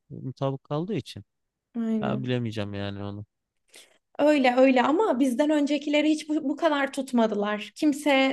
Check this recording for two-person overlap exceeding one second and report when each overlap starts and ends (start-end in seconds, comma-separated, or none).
none